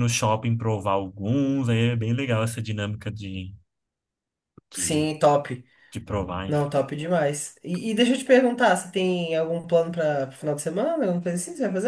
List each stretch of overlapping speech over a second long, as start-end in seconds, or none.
none